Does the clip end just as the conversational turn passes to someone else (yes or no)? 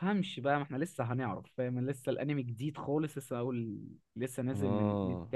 yes